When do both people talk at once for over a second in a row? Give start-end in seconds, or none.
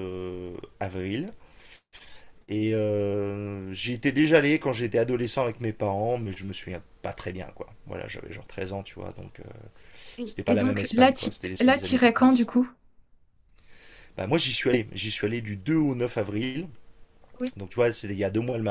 10.2-12.5